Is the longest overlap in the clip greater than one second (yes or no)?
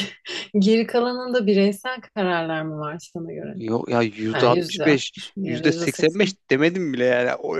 yes